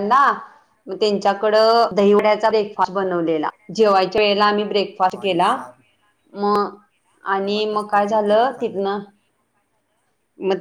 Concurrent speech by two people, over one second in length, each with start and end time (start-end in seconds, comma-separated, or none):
7.4-8.8